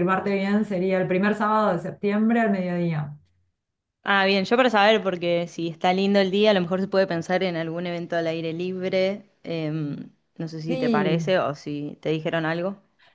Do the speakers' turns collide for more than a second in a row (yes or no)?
no